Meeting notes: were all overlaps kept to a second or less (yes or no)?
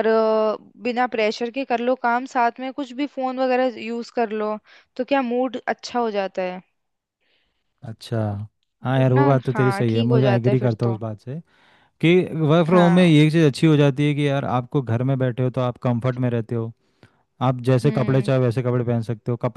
no